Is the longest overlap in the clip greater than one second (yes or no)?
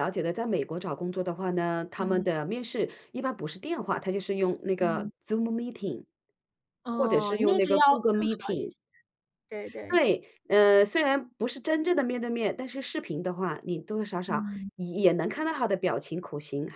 yes